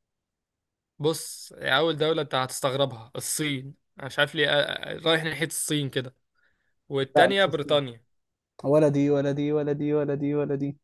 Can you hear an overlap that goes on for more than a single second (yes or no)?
no